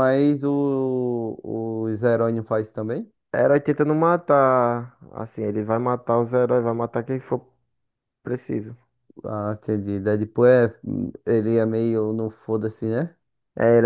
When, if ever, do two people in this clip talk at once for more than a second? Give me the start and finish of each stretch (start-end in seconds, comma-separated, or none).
none